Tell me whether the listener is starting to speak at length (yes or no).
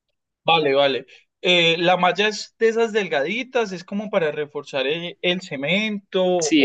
yes